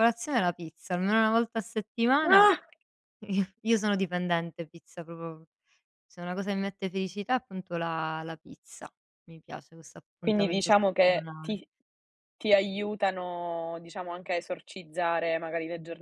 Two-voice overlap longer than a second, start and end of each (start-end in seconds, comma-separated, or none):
10.2-11.6